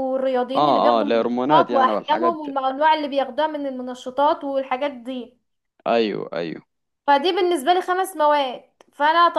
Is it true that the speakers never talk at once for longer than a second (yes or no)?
no